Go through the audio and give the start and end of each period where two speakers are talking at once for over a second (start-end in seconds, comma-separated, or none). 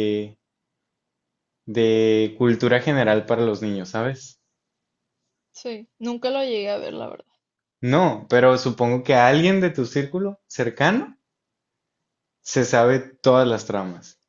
none